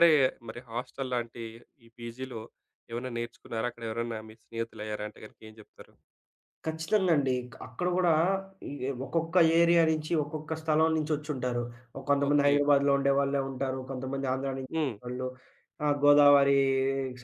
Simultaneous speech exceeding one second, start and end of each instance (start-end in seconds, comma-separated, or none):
none